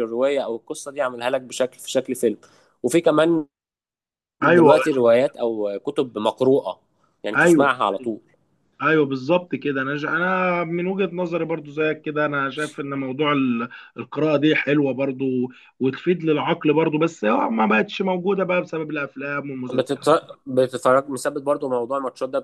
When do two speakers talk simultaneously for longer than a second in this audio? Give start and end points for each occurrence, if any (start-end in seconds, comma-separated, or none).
none